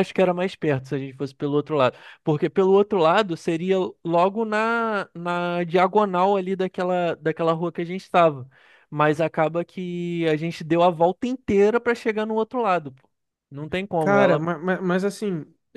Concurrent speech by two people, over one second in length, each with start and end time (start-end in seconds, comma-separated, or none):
none